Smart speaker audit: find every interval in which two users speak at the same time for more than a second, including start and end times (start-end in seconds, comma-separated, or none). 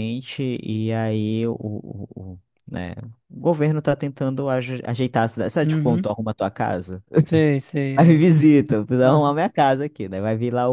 none